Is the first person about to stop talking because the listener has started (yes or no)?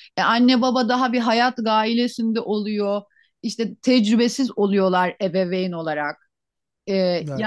no